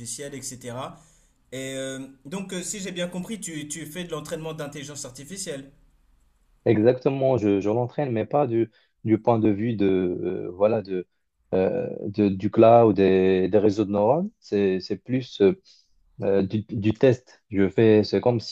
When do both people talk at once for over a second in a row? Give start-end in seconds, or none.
none